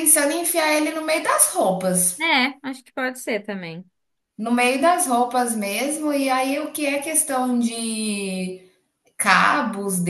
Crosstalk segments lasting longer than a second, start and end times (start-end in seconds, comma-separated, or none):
none